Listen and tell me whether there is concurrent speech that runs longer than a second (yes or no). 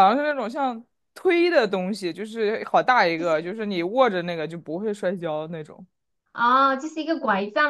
no